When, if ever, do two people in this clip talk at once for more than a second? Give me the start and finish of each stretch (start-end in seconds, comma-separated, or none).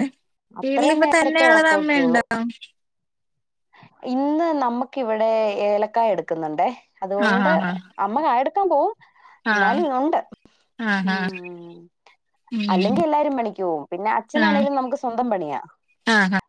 0.6-2.2